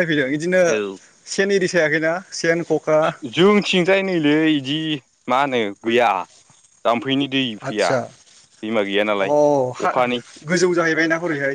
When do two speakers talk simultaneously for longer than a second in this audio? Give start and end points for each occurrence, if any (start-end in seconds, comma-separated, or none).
none